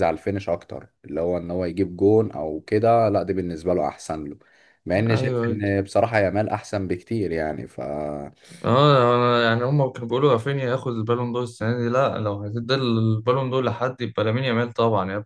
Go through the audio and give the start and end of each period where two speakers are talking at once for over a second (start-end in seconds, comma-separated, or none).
none